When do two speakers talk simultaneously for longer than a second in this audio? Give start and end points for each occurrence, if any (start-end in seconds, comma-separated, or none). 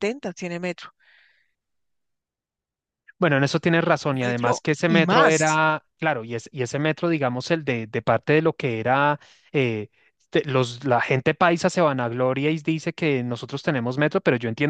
4.2-5.6